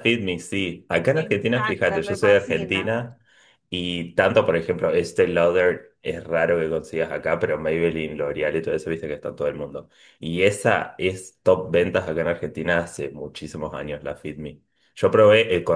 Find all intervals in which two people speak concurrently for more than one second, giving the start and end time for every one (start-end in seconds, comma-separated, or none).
1.1-2.9